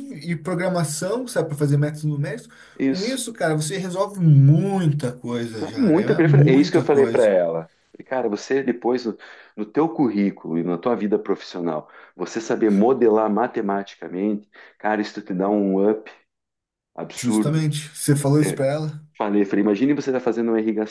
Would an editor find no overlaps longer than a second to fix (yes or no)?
no